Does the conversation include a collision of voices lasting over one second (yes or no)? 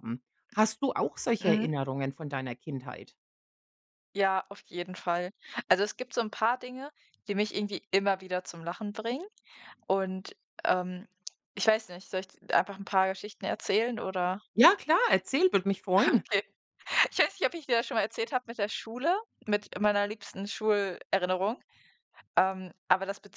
no